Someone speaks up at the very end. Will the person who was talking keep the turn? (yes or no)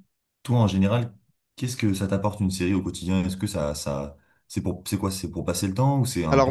no